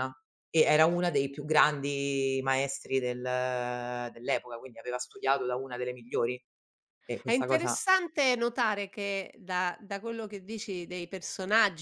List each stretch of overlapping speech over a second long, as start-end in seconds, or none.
none